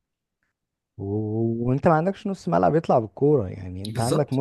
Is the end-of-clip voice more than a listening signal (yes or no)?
no